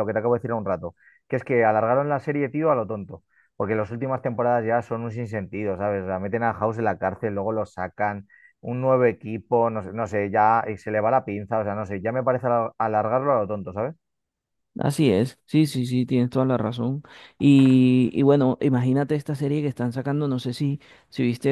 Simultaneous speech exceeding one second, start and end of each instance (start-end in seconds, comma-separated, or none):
none